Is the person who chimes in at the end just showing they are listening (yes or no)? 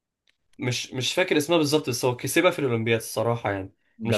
no